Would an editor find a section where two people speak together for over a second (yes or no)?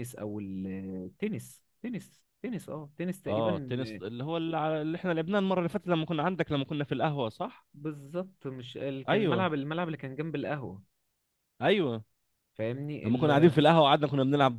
no